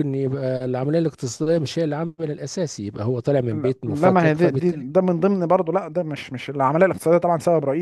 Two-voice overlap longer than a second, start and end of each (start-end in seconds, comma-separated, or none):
3.5-4.8